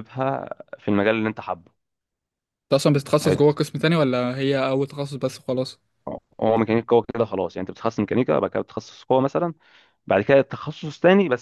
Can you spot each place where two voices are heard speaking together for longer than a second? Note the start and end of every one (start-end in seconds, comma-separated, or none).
none